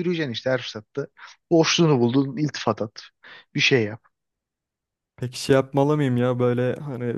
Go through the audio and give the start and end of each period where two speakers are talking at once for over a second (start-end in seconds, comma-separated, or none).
none